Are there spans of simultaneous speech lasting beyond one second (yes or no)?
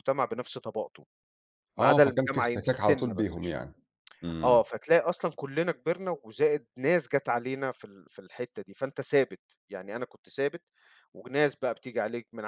yes